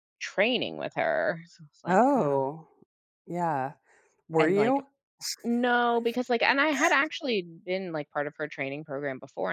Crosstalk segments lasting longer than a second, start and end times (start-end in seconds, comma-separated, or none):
none